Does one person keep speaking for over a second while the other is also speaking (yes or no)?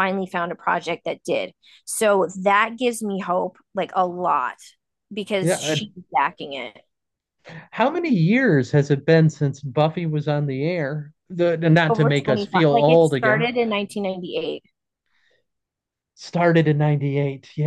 yes